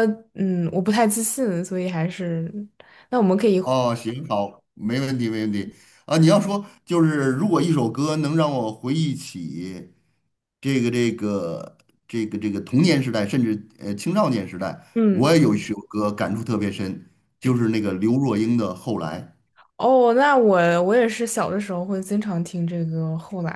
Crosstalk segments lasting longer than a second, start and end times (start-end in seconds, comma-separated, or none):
none